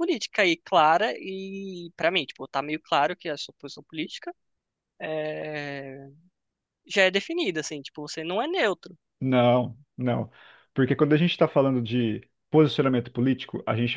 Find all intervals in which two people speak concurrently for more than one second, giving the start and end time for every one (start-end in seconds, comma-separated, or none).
none